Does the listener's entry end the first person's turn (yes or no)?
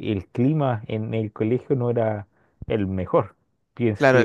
yes